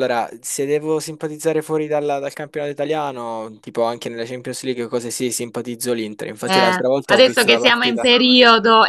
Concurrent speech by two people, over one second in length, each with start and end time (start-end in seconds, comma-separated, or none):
6.5-8.1